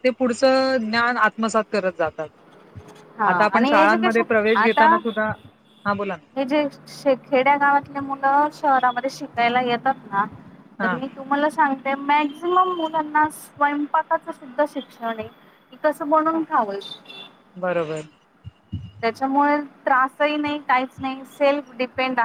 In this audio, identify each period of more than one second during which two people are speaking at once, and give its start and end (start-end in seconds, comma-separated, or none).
3.3-4.9